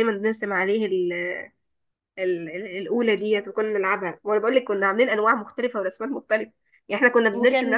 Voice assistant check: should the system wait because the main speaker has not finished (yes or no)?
yes